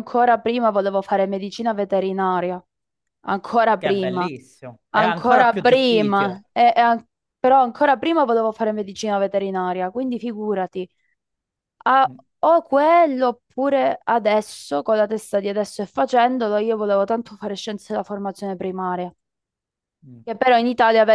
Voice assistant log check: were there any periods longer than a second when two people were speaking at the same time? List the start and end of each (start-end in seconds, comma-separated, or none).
4.9-6.4